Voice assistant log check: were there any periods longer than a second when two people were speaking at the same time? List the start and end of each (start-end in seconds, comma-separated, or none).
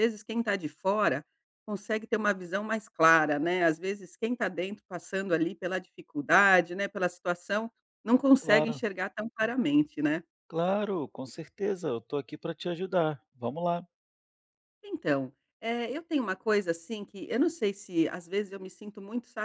none